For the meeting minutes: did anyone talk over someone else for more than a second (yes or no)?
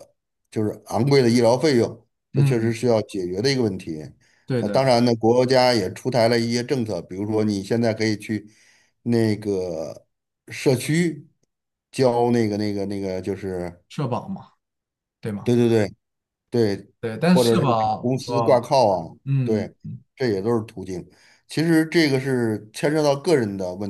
yes